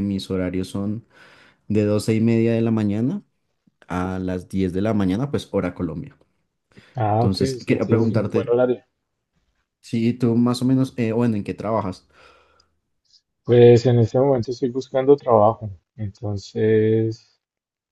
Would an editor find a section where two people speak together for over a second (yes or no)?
yes